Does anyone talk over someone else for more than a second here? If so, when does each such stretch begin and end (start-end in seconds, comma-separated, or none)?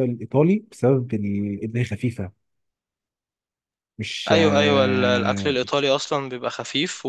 4.3-5.6